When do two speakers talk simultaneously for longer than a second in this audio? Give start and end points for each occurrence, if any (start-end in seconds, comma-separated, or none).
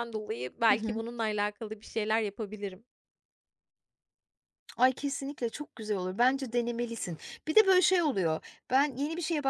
none